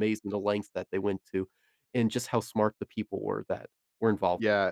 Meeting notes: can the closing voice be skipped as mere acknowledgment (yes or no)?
no